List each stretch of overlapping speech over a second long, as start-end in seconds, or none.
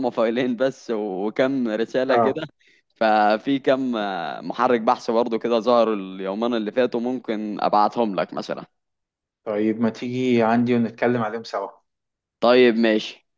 none